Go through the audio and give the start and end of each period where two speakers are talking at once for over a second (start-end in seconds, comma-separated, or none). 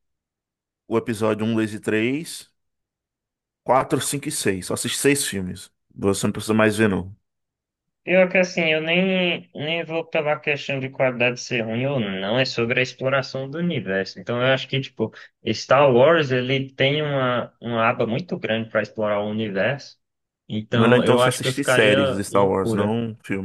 20.7-22.9